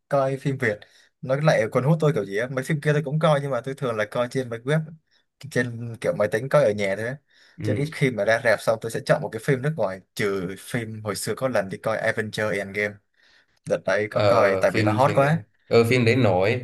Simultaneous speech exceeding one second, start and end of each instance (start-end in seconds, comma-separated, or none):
14.1-15.4